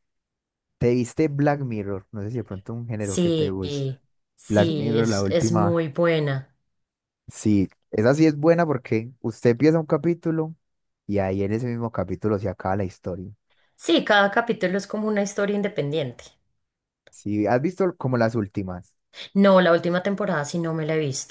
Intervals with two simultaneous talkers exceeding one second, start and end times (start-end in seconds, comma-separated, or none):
4.5-5.8